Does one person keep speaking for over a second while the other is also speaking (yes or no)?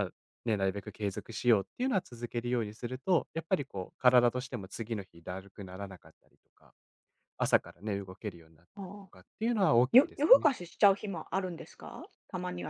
no